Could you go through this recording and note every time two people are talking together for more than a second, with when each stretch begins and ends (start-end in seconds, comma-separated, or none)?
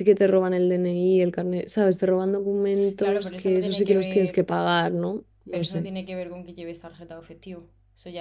3.0-4.3